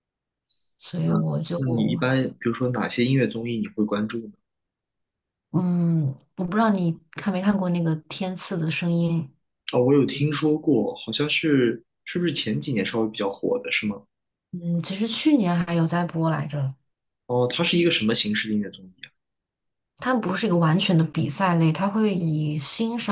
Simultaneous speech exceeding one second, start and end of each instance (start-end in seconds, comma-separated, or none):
none